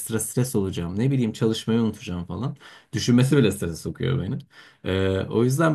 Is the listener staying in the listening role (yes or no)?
yes